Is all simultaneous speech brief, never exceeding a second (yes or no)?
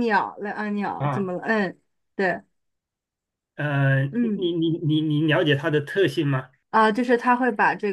yes